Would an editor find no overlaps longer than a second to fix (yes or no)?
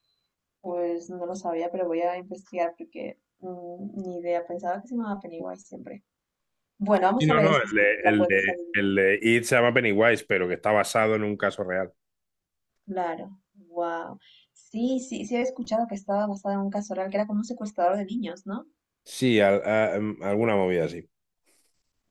no